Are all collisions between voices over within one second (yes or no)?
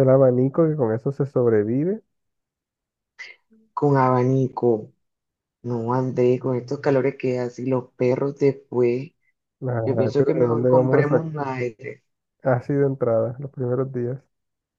no